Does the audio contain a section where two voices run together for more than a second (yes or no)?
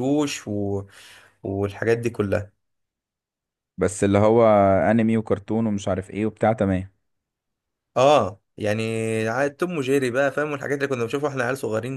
no